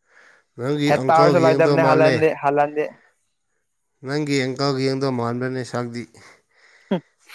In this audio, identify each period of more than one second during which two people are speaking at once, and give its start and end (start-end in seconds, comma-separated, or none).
0.9-2.2